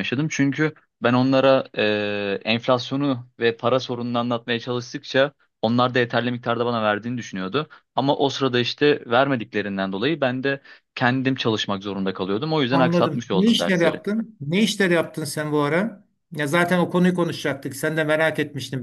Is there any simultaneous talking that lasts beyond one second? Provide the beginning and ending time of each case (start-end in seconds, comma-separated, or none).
12.7-14.0